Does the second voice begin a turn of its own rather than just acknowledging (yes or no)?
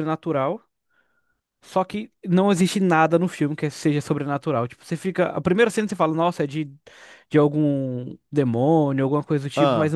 no